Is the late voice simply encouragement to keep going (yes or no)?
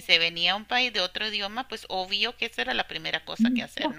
no